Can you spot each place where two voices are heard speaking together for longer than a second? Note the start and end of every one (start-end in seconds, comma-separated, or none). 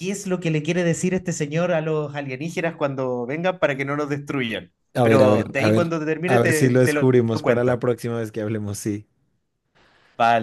5.0-7.8